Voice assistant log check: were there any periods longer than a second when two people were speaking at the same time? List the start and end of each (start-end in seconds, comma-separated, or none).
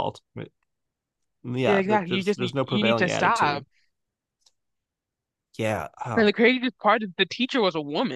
1.6-3.6